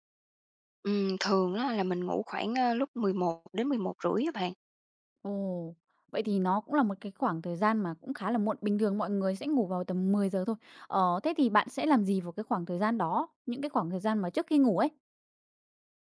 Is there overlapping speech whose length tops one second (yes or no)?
no